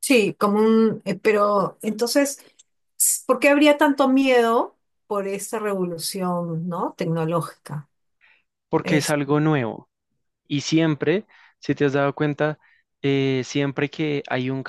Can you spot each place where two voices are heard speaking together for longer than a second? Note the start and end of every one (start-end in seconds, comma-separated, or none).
none